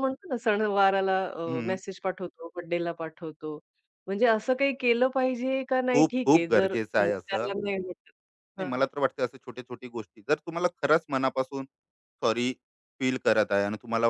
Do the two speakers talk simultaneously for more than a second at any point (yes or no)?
yes